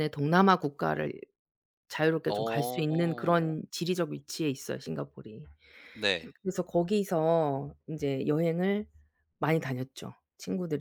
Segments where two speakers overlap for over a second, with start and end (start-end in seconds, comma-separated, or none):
2.3-3.6